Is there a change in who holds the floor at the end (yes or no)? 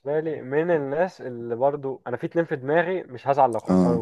no